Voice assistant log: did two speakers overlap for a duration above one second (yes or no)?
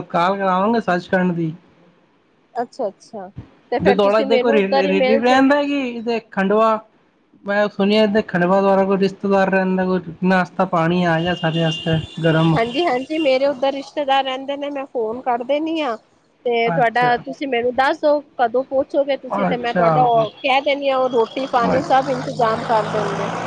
yes